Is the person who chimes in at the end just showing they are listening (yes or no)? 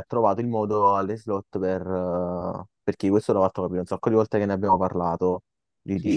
no